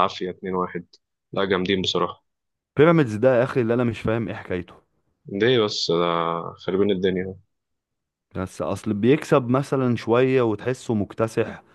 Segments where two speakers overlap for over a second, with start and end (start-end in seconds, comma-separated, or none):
none